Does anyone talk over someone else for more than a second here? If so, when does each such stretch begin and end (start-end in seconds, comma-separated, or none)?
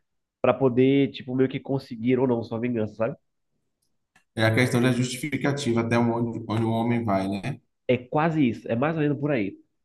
none